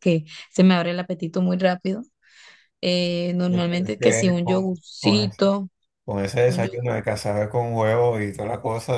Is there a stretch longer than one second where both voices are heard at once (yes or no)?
yes